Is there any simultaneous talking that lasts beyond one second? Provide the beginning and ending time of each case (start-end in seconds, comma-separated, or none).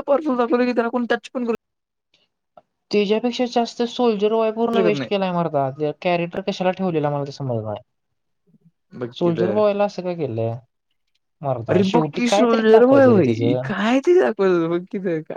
11.7-13.7